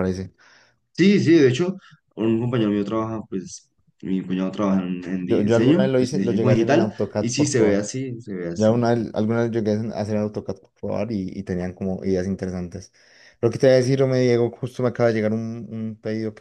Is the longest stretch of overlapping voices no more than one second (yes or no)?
no